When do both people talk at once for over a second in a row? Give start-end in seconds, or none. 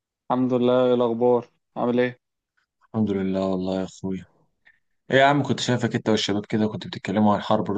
none